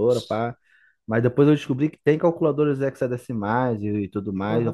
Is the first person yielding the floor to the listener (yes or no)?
yes